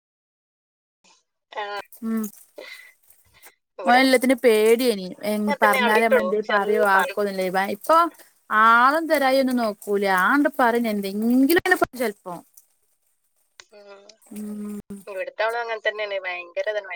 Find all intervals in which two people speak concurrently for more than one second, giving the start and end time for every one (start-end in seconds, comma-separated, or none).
5.4-7.2